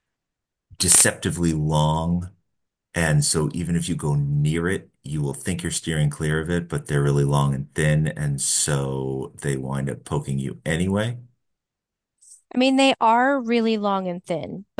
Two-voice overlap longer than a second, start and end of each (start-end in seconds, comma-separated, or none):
none